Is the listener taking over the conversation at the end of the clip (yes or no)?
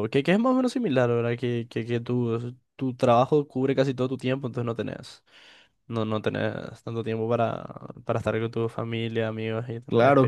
yes